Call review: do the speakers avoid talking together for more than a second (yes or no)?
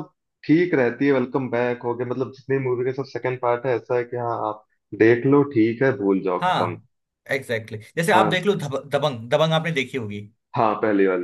yes